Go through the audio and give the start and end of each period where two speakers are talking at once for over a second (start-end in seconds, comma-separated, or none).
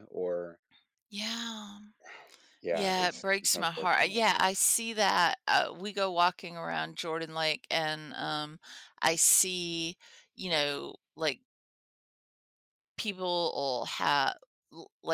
2.7-4.2